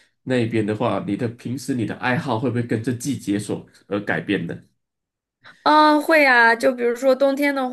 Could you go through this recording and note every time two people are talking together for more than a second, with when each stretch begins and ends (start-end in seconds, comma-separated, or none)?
none